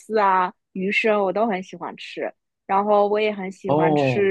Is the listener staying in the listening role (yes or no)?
yes